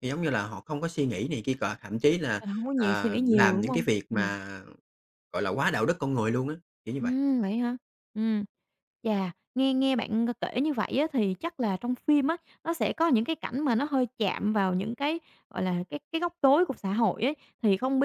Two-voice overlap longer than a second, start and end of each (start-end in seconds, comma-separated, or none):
2.4-4.2